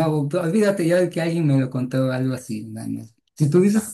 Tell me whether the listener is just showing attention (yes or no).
yes